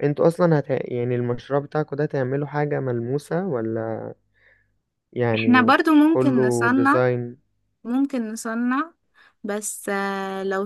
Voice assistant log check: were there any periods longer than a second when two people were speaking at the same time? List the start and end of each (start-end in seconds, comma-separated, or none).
5.3-7.0